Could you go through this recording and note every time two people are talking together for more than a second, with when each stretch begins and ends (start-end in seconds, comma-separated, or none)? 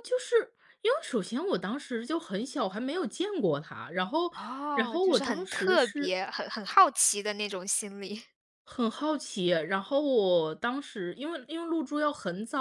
4.7-6.2